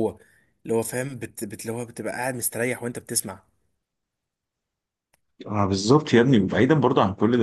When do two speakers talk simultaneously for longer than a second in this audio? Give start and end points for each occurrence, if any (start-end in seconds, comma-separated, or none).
none